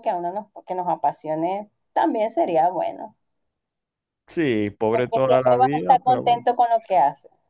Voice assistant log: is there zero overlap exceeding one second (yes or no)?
no